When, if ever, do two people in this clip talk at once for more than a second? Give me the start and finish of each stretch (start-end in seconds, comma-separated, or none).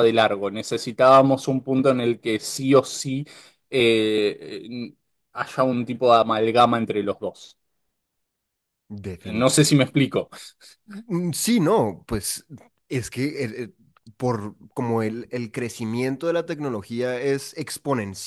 none